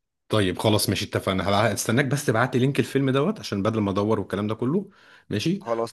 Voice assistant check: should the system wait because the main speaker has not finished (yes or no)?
yes